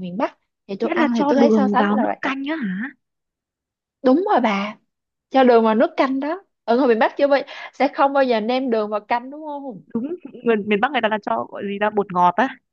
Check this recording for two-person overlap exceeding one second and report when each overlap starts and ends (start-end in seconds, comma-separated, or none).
0.8-2.2